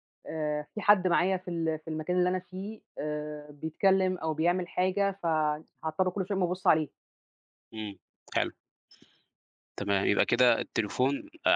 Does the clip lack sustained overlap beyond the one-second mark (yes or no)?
yes